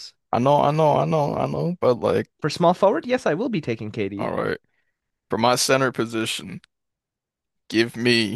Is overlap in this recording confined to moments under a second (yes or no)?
yes